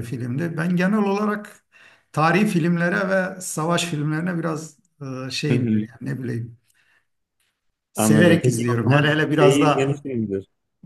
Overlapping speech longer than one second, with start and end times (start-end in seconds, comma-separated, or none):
8.0-9.9